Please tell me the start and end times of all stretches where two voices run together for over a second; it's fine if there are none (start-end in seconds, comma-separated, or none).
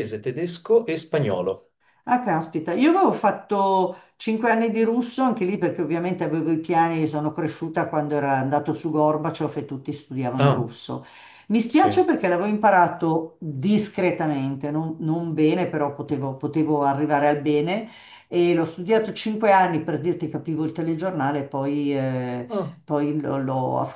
none